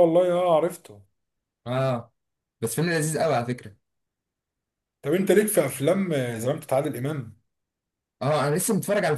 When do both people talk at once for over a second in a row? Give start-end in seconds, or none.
none